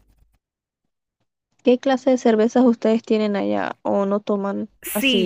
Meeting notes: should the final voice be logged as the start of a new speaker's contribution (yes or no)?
yes